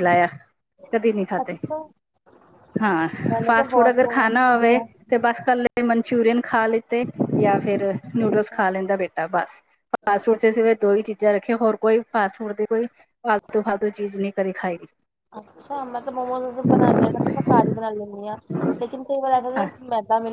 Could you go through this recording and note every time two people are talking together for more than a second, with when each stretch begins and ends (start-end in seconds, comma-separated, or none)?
3.5-4.9